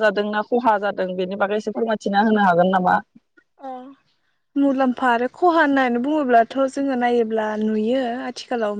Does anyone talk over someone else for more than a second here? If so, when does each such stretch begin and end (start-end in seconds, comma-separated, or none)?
none